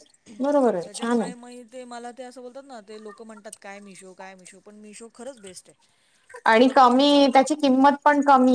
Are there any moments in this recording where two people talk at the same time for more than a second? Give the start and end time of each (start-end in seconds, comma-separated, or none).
6.5-7.8